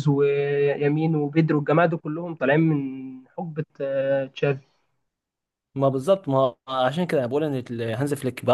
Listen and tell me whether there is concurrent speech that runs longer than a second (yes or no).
no